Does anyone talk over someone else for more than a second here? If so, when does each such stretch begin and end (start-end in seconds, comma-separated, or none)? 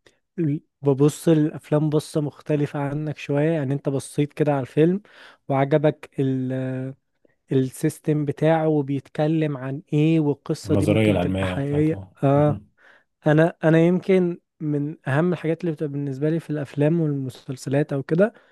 10.7-12.6